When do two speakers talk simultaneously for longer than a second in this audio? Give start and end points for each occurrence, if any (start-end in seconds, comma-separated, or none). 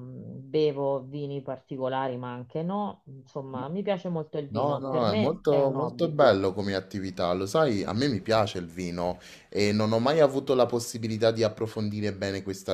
4.5-6.2